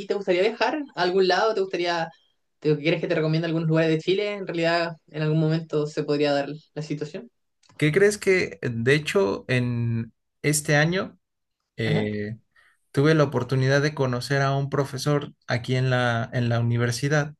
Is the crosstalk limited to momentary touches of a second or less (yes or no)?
yes